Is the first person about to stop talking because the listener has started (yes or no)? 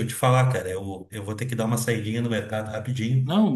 no